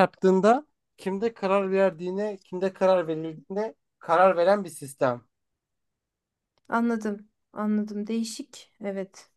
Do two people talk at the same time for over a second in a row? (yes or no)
no